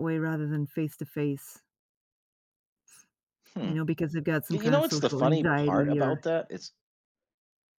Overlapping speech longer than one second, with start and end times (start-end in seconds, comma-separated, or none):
4.5-6.2